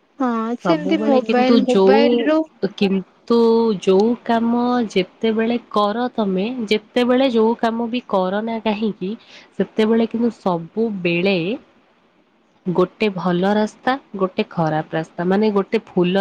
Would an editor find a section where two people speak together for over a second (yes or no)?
yes